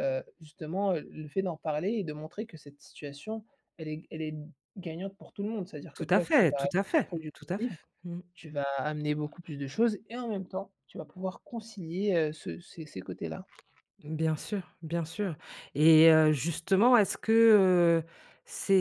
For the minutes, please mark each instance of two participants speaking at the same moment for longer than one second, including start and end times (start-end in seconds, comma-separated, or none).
5.9-7.9